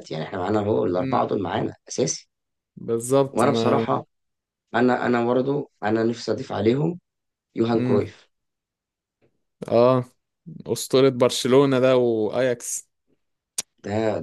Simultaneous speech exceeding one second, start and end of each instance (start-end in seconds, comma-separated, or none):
none